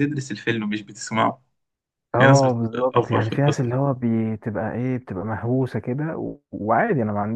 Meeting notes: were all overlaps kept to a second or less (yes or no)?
no